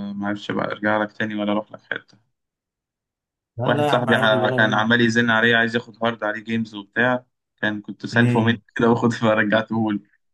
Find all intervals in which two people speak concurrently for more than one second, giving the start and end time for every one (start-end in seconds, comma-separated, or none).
3.7-4.9